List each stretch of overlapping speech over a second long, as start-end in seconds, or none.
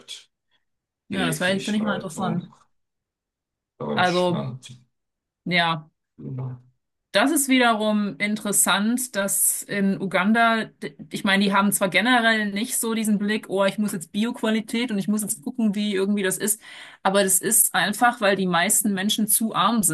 1.1-2.5